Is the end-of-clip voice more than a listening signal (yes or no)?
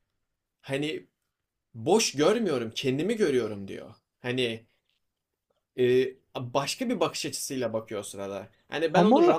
no